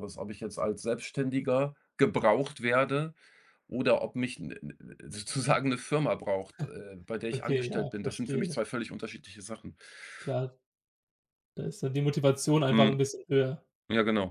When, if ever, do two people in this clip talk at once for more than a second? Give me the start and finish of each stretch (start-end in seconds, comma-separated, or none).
7.3-8.6